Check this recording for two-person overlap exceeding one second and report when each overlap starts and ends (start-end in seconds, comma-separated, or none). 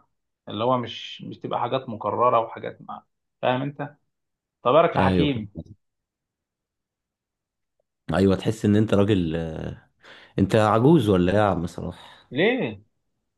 none